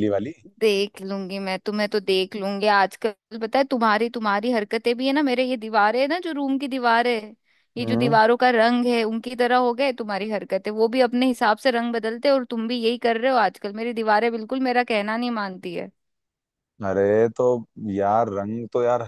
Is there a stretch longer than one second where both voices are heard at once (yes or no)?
no